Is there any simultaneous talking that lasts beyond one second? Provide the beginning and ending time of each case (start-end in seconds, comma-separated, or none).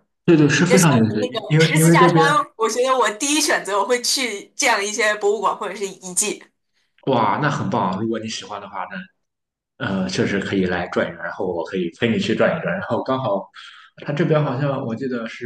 0.7-2.1